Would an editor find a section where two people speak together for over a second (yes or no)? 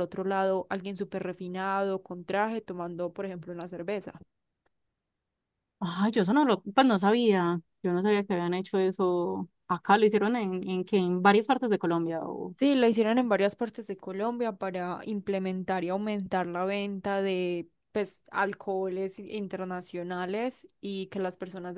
no